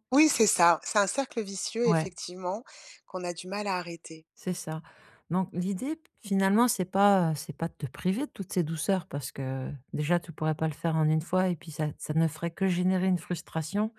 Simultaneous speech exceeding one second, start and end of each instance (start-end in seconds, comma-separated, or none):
none